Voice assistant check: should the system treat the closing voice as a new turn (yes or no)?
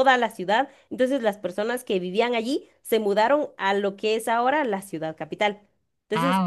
no